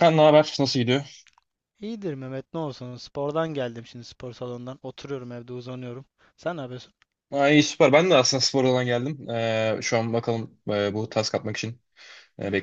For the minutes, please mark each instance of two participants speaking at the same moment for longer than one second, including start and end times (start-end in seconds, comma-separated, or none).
none